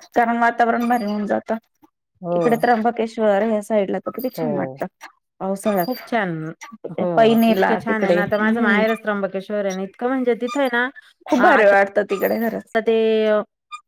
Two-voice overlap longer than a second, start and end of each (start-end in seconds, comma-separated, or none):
7.5-8.8